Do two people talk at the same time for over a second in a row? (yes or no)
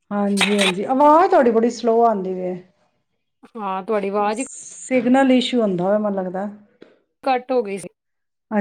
no